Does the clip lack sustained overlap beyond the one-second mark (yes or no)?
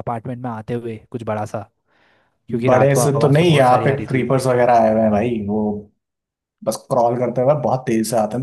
no